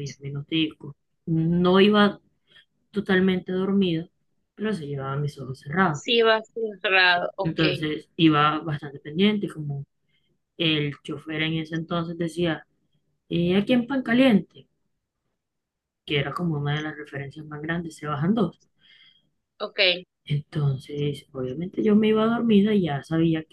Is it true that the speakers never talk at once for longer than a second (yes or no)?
yes